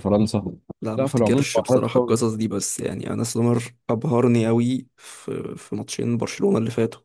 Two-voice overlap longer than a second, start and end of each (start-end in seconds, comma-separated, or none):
1.0-2.2